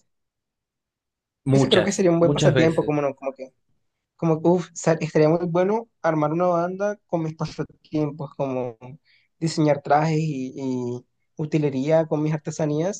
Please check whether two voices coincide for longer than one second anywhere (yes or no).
yes